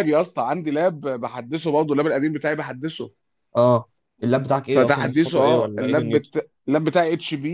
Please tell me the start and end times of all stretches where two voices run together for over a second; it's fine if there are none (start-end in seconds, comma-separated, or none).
4.7-6.3